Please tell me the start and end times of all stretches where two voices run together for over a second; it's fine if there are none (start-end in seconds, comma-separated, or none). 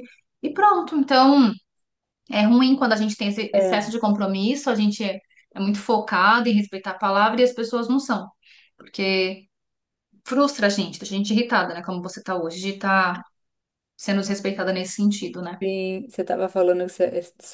none